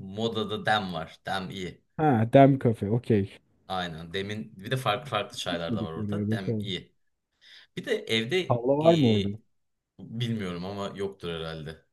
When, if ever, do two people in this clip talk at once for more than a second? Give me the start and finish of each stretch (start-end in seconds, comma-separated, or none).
5.5-6.7